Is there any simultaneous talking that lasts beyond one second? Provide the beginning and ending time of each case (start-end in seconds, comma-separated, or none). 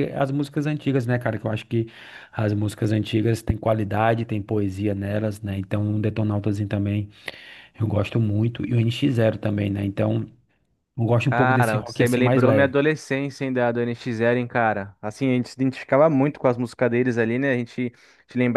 11.3-12.7